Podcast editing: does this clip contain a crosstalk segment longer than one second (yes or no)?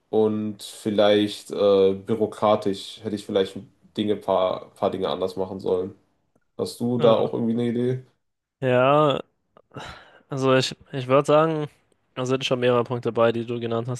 no